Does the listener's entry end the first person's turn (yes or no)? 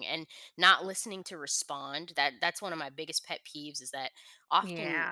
no